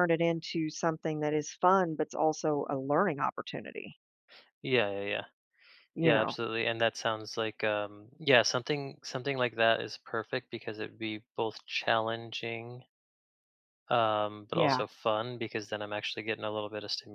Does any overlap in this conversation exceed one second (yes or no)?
no